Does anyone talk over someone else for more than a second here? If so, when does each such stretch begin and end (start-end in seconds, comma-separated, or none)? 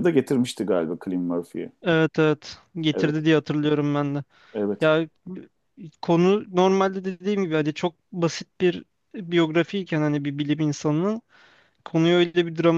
none